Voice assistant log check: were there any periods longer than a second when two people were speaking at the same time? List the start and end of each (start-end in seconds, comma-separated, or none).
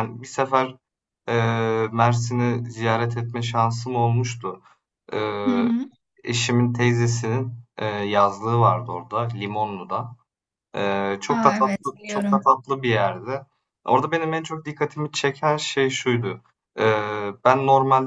11.3-12.5